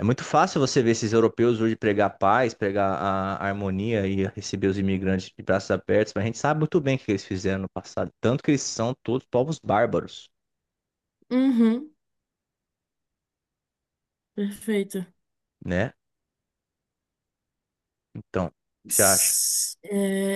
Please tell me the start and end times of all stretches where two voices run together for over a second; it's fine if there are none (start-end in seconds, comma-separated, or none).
none